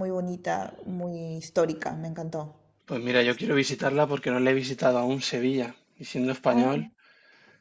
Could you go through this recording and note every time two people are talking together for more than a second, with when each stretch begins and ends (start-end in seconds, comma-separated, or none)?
none